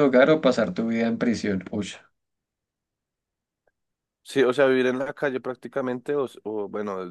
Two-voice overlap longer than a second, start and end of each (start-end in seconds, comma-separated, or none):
none